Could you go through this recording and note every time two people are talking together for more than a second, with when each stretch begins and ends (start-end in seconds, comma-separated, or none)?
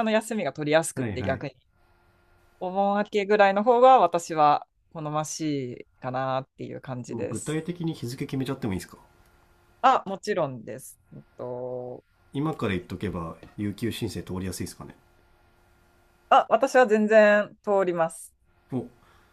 none